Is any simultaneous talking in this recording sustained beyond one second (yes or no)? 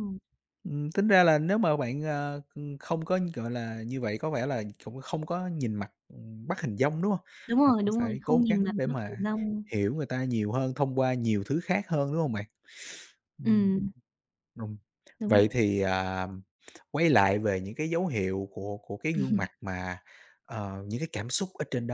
yes